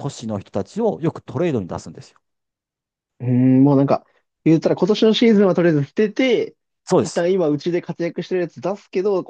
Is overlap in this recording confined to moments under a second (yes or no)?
yes